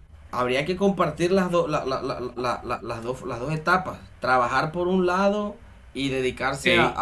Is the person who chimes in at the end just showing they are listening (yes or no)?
yes